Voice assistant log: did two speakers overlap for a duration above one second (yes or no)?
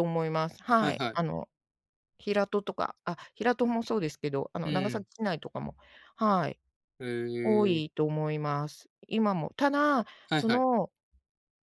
no